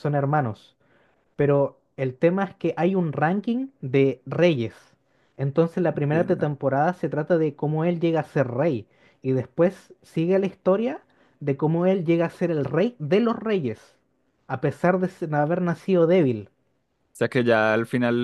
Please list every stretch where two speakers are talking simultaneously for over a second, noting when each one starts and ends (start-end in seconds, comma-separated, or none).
none